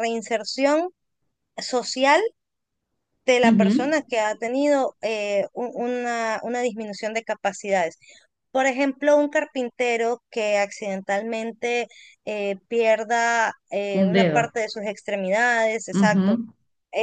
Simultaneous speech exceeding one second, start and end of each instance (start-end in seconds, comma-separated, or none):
none